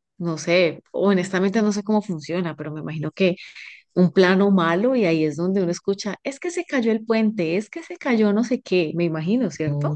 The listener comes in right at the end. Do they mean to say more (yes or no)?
yes